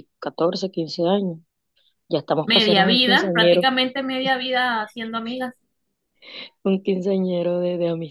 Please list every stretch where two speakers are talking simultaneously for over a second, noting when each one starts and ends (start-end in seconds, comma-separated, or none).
2.5-3.7